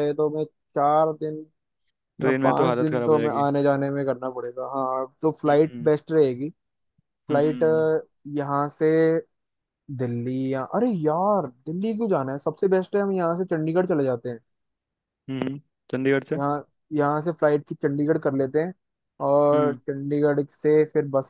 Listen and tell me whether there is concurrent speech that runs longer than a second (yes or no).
yes